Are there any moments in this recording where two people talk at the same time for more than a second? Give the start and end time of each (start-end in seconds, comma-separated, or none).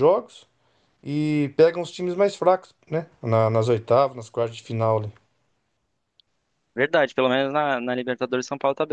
none